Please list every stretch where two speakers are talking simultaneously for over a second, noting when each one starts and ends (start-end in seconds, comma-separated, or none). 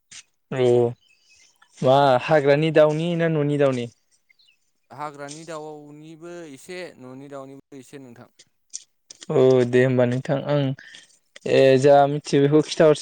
none